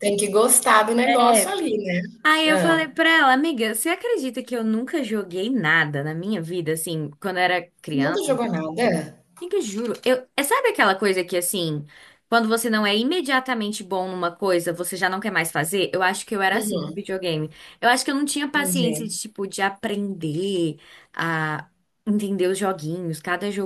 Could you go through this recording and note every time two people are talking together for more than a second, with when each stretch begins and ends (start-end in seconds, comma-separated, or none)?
none